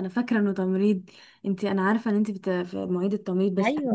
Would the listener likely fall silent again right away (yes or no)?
yes